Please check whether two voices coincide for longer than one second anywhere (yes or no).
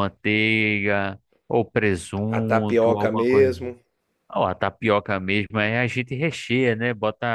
yes